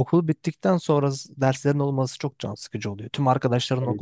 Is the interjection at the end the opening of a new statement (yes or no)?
no